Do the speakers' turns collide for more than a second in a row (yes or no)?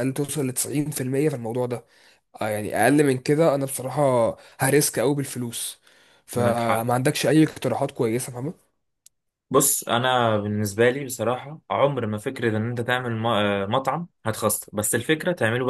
no